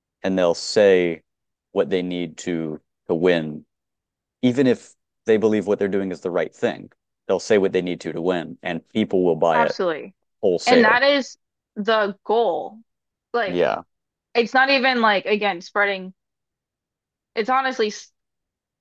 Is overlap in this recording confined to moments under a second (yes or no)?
yes